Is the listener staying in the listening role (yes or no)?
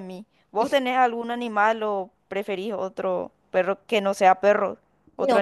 no